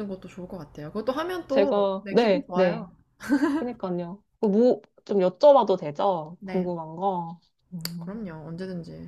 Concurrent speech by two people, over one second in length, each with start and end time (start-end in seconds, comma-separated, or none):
1.5-2.9